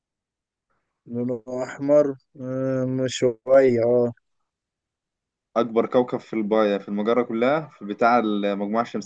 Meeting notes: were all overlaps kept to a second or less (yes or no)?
yes